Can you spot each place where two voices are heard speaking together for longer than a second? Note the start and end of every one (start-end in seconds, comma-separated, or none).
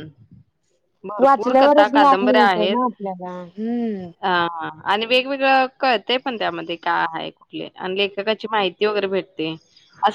1.2-2.8